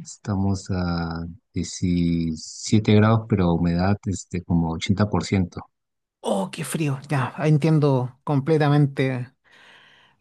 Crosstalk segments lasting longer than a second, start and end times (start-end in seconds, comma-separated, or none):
none